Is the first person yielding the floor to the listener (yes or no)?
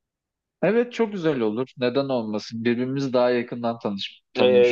yes